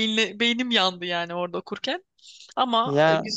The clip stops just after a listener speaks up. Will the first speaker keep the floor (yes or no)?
no